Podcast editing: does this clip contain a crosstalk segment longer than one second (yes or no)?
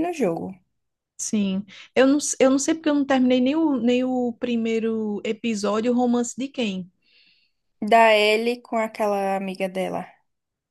no